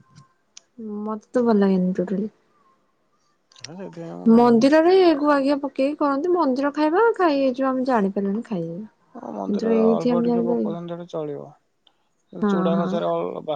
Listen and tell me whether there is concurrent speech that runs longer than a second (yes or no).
yes